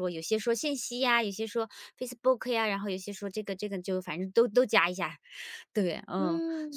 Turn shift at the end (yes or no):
yes